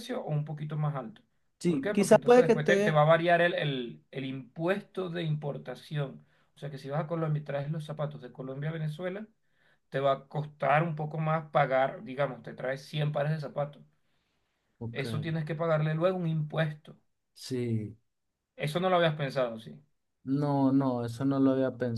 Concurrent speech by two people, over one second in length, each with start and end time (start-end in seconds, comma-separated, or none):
1.6-3.0